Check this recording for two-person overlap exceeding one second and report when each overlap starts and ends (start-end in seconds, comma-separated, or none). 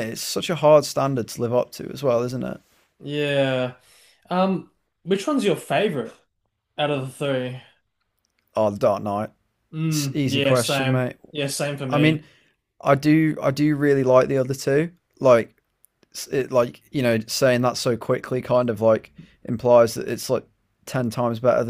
9.9-11.2